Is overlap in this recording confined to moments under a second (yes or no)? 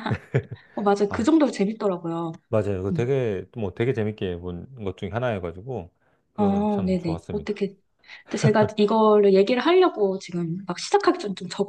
no